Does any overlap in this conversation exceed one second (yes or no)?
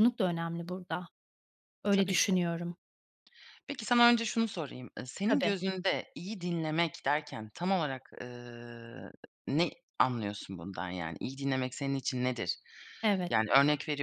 no